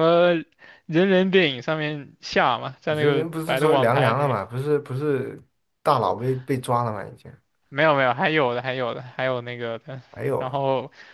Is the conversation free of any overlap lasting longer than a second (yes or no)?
no